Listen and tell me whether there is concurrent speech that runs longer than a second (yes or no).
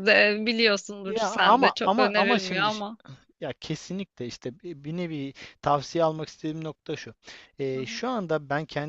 yes